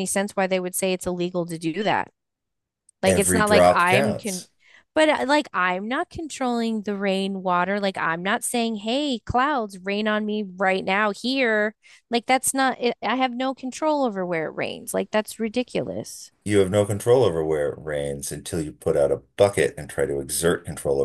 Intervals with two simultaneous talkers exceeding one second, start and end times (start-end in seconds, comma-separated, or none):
3.0-4.5